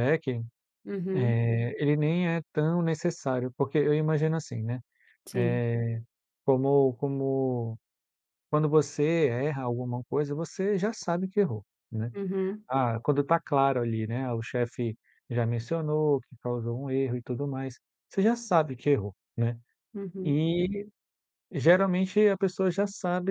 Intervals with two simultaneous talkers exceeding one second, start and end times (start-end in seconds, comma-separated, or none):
none